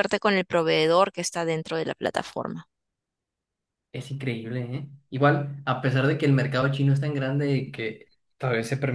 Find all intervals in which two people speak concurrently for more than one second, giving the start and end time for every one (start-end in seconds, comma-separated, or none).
none